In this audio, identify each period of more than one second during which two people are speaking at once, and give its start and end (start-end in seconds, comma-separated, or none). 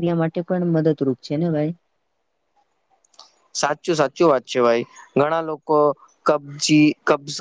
none